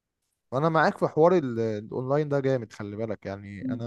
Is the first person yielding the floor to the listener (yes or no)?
yes